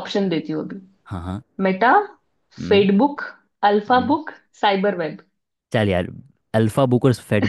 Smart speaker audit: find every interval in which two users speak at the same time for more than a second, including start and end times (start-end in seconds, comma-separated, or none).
none